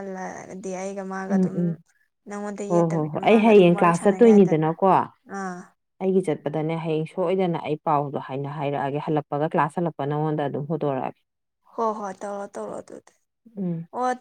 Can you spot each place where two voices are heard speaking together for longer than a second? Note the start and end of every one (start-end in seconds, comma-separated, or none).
2.7-4.7